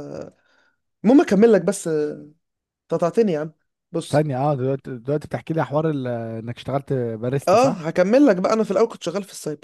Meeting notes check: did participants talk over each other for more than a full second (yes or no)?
no